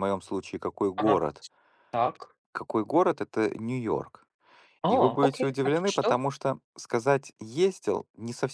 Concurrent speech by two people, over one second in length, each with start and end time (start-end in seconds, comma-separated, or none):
4.9-6.2